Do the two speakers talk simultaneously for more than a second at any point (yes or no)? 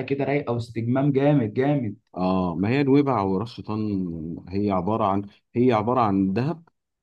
no